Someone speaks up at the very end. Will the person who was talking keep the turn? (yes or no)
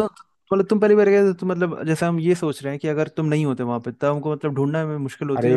no